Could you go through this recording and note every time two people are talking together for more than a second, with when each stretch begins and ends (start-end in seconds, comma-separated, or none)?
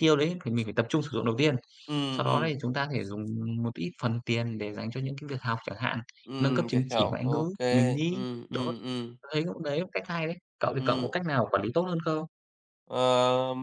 6.4-8.6